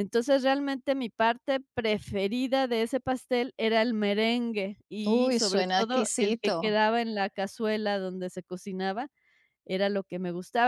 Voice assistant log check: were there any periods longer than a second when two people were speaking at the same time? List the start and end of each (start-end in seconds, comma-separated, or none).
5.1-6.7